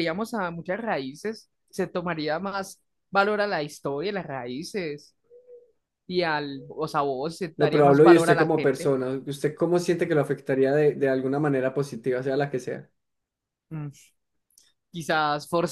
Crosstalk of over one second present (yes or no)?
yes